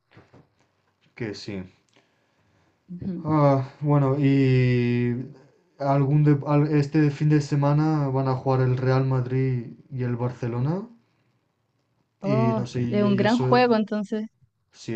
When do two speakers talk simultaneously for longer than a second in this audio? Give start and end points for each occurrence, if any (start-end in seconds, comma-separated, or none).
12.2-13.6